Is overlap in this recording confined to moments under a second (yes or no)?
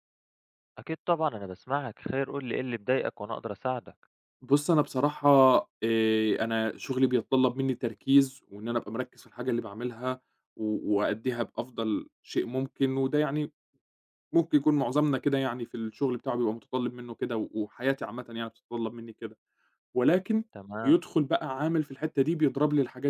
yes